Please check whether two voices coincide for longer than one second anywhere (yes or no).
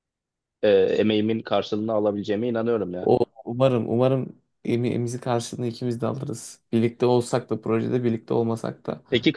no